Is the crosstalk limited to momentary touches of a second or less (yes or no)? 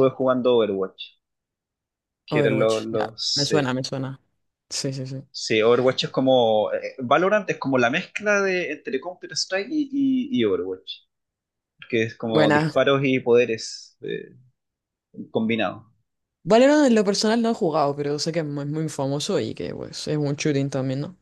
no